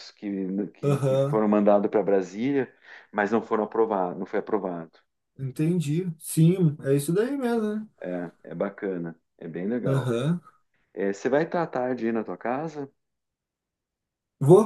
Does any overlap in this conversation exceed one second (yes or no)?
no